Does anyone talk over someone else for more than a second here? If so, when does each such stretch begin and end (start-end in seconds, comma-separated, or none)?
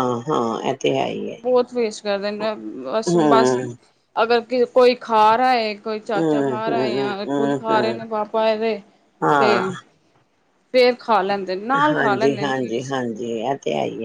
6.2-8.0